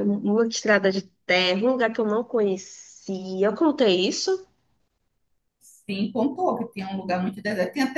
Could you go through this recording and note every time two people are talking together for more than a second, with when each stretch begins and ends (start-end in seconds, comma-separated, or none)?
none